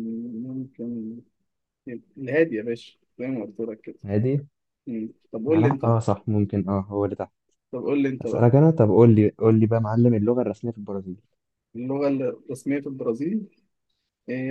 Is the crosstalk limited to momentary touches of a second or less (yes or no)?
yes